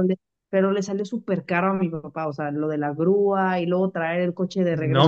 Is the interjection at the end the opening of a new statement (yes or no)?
yes